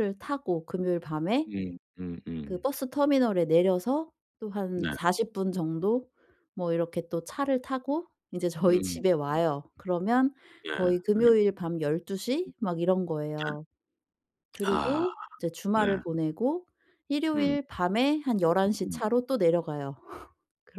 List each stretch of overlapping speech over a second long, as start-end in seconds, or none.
none